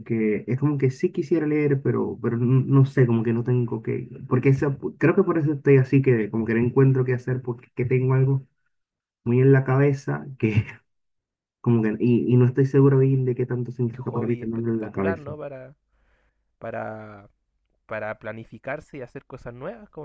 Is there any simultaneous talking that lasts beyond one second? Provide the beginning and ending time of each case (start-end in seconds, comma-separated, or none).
14.0-15.3